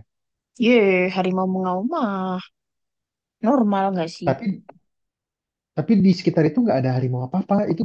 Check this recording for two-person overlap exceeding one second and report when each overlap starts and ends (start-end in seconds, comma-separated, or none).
none